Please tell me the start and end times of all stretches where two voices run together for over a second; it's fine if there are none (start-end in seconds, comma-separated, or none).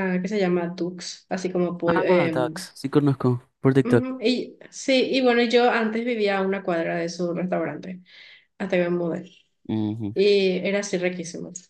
none